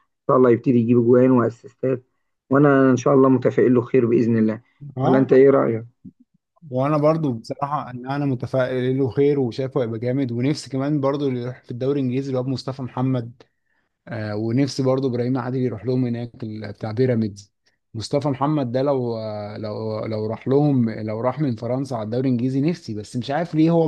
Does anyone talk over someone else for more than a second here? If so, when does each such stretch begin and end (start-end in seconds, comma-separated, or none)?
none